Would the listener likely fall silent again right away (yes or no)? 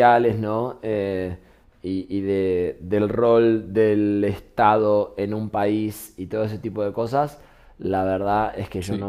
yes